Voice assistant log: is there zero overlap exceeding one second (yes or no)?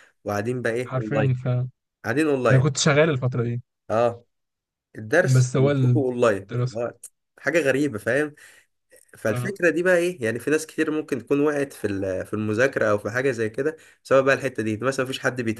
no